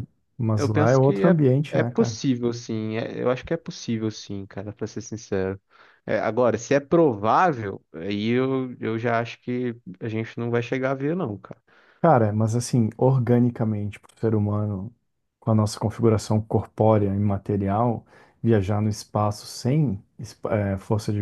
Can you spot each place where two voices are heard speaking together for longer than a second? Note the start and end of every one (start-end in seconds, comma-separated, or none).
0.6-2.1